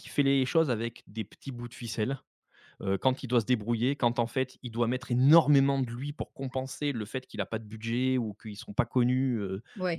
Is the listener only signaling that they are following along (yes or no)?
yes